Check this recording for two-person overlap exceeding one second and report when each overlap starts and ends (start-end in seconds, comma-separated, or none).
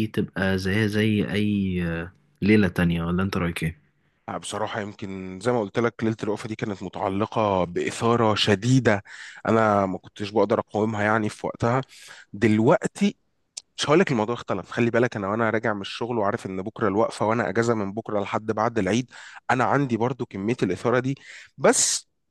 none